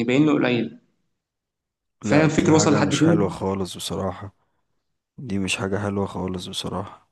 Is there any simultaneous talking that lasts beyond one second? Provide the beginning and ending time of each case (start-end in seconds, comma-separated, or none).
2.0-3.4